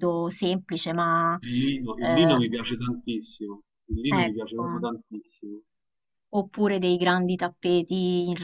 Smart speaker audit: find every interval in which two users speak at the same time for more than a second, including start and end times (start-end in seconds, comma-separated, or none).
none